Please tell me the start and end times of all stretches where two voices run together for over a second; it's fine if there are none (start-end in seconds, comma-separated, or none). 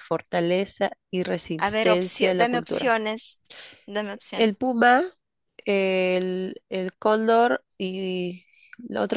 1.6-3.0